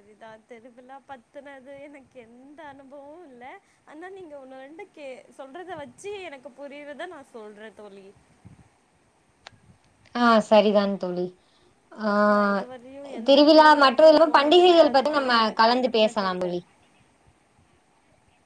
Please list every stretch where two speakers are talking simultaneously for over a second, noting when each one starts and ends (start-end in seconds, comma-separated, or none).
13.3-16.5